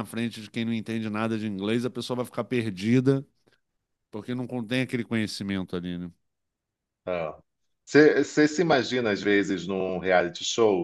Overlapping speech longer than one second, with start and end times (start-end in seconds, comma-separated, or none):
none